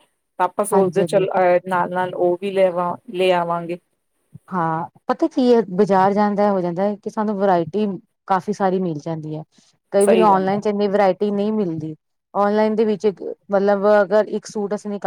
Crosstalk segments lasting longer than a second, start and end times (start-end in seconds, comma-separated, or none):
none